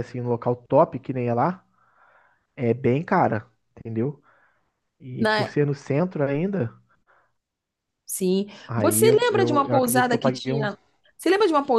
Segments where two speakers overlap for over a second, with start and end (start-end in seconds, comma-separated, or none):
8.7-10.7